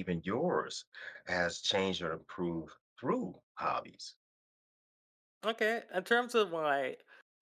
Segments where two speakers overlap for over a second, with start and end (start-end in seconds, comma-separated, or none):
none